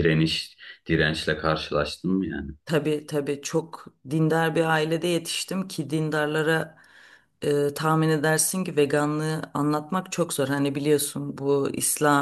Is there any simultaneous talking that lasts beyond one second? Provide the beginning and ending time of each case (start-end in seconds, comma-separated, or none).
none